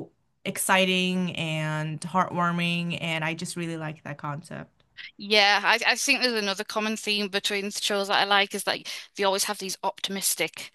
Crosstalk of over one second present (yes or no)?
no